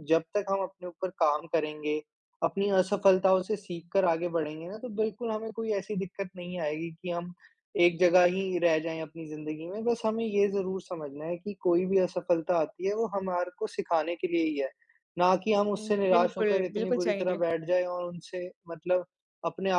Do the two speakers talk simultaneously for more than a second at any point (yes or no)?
yes